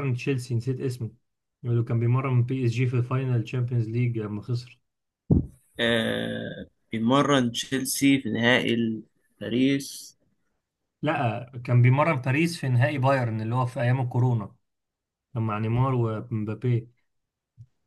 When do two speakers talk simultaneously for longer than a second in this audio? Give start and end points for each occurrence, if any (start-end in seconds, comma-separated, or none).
none